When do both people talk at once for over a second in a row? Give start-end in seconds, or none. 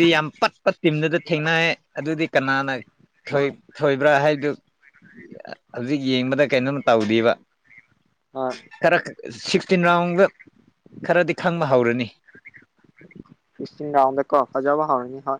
none